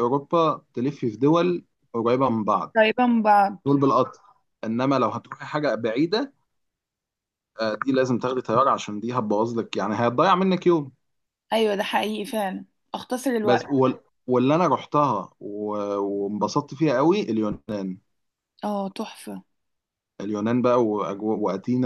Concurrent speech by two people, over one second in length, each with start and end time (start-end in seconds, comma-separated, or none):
none